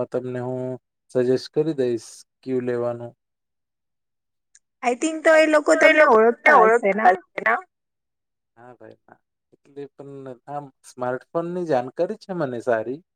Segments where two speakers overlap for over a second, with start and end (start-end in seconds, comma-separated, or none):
none